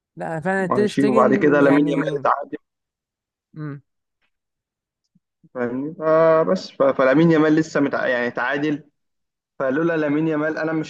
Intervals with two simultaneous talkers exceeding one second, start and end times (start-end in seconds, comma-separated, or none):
0.6-2.2